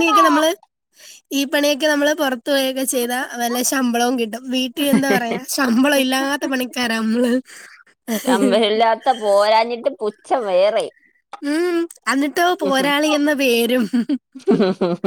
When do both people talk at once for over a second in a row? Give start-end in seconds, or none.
none